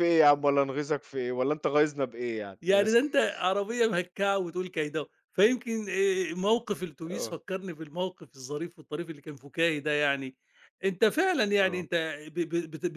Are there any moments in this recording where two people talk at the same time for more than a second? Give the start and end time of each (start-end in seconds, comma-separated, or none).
none